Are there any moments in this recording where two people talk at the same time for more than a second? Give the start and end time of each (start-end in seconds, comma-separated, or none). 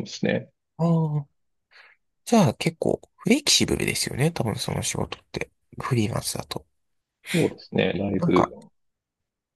none